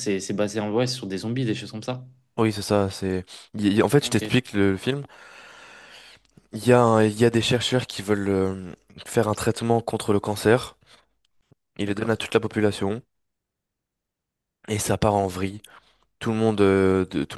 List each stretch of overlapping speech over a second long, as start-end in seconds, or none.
none